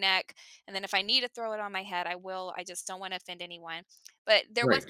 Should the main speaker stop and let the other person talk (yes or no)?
no